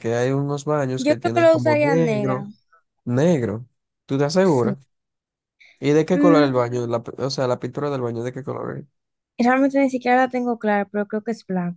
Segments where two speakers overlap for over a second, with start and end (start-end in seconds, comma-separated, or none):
1.0-2.4